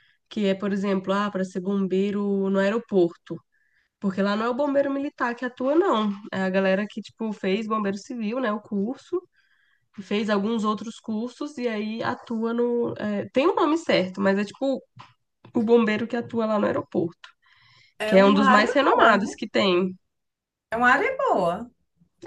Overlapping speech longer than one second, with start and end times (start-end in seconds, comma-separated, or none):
18.1-19.4